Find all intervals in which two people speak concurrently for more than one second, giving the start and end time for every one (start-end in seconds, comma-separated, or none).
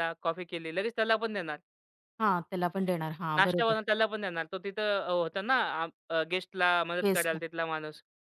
none